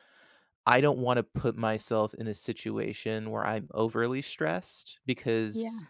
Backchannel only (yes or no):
yes